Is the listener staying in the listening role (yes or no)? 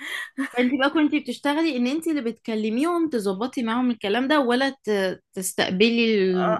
no